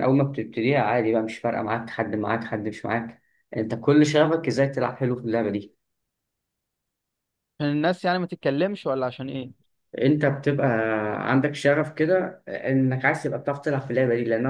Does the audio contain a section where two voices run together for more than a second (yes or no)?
no